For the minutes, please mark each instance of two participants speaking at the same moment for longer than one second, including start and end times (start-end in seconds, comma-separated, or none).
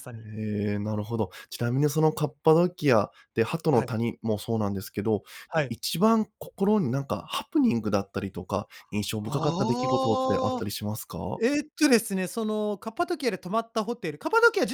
9.2-10.7